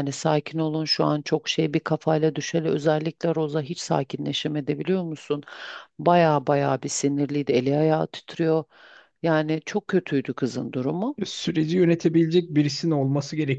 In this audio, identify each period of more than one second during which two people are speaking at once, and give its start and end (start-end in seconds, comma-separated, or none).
none